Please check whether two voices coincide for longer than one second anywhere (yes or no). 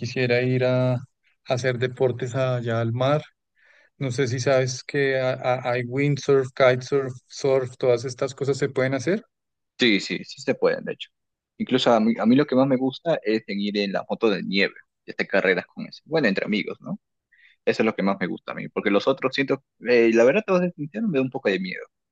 no